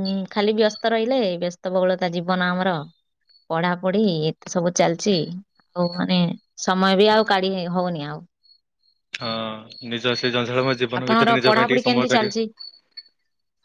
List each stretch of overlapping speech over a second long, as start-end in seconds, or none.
11.0-12.4